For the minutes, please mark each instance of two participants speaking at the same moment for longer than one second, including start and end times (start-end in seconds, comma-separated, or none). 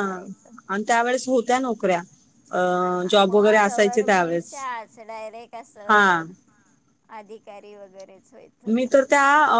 3.3-4.5